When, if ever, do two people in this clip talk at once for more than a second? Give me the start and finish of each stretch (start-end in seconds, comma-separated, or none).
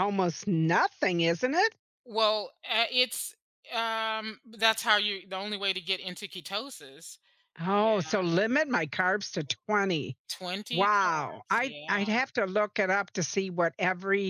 10.7-12.1